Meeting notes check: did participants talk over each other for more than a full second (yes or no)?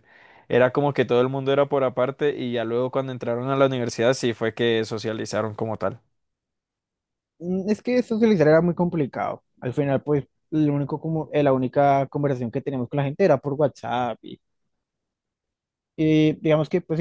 no